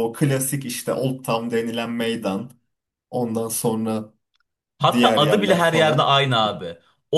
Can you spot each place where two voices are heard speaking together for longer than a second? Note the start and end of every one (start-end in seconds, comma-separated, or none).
4.9-6.2